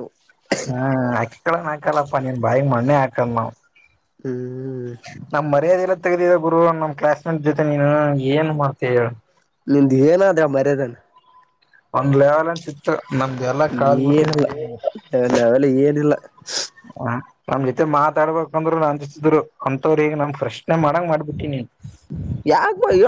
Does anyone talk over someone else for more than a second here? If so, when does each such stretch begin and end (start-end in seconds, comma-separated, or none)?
none